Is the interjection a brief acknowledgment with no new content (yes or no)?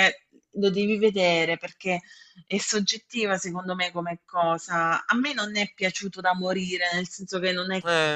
yes